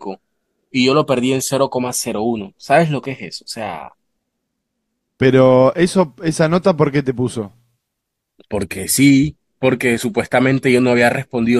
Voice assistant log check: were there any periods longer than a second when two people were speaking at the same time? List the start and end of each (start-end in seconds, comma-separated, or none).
none